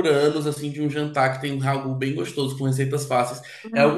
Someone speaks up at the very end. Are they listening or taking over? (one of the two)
taking over